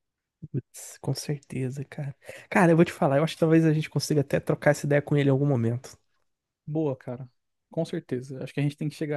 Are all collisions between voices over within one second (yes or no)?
yes